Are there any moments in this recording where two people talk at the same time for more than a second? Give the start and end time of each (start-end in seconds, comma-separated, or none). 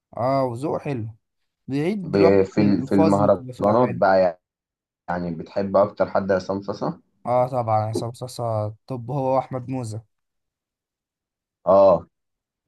2.0-4.0